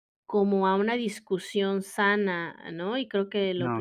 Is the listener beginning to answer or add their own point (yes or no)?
no